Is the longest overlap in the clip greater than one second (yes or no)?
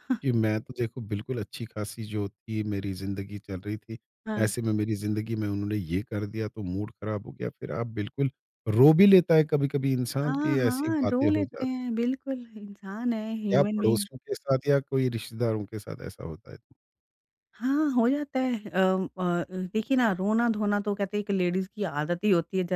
yes